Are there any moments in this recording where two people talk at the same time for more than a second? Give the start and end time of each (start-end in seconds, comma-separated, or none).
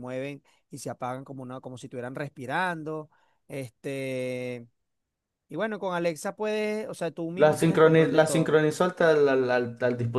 7.3-8.6